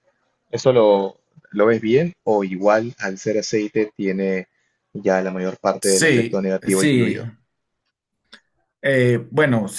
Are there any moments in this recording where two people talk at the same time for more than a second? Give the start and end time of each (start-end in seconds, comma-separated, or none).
5.8-7.2